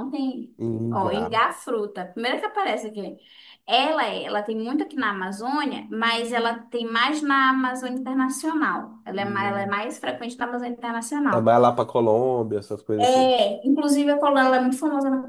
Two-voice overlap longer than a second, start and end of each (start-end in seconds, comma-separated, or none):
none